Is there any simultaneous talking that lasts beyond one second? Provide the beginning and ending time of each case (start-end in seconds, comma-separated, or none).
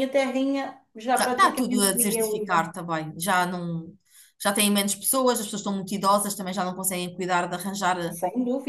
1.2-2.7